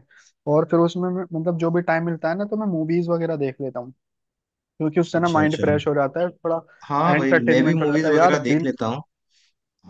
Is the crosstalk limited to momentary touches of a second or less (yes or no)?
no